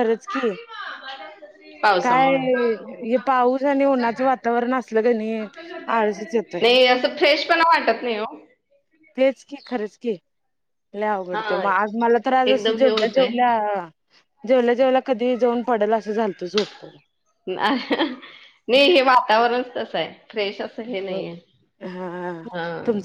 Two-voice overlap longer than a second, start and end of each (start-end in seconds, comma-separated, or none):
11.3-13.3